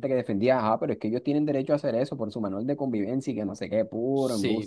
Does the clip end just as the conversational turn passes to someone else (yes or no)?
yes